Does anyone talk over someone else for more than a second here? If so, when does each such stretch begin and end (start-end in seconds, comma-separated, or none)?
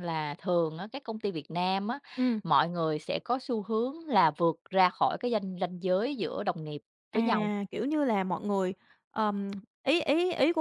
none